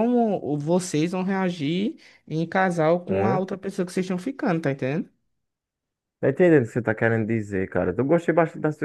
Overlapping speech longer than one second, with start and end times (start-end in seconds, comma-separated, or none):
none